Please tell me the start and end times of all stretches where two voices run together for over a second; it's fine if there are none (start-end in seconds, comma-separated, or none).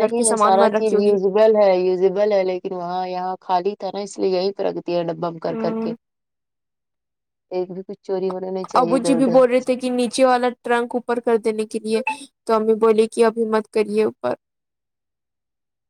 none